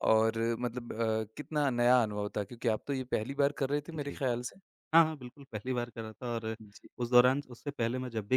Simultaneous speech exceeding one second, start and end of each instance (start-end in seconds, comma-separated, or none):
none